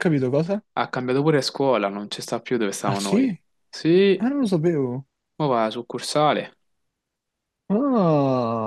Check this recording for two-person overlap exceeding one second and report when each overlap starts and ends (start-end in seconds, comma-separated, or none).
none